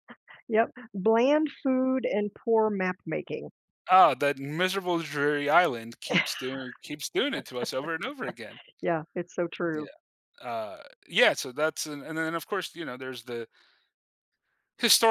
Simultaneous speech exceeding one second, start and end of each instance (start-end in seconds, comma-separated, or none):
none